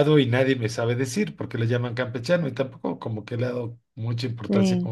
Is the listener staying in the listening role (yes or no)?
yes